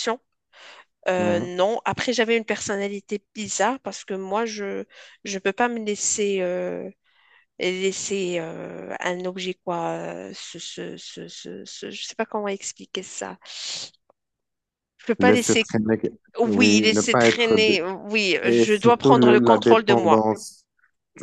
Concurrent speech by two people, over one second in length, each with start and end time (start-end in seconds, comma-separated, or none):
16.4-17.8, 18.4-20.3